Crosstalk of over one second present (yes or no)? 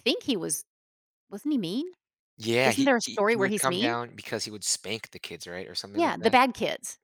yes